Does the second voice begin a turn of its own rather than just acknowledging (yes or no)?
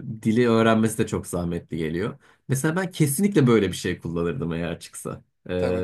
no